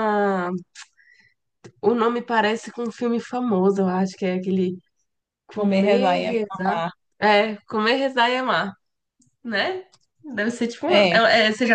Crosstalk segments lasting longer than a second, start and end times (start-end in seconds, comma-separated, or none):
5.5-6.8